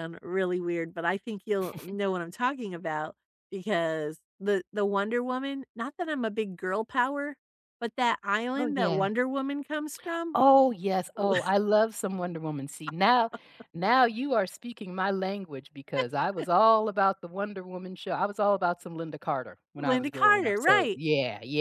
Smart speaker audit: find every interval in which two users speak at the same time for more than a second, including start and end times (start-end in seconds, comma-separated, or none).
19.8-21.0